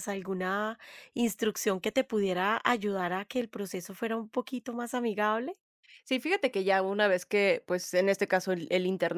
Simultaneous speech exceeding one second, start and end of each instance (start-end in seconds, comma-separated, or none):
none